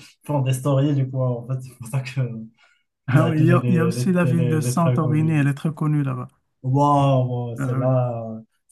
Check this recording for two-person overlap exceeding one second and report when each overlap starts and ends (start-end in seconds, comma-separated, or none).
3.1-5.4